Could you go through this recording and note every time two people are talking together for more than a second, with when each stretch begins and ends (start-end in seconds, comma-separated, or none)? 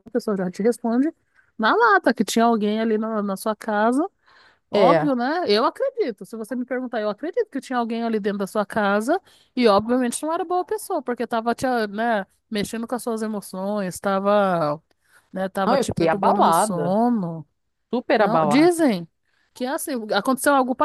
15.7-16.9